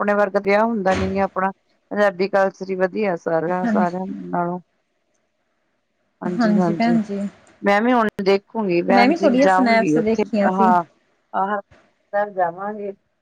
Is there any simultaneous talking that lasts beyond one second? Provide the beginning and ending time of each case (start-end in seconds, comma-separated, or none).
8.9-10.7